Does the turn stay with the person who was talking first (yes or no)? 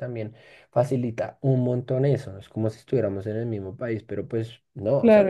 no